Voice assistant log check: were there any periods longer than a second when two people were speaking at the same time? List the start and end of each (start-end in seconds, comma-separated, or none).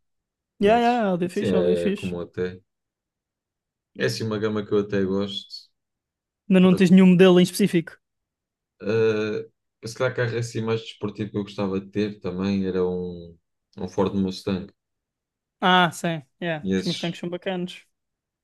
0.6-2.1